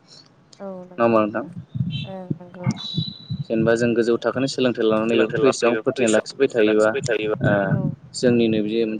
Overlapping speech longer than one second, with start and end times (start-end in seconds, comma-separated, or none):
4.0-6.9